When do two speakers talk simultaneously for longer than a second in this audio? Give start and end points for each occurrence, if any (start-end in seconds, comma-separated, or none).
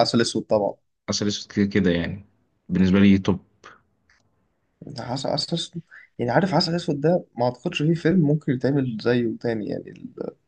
none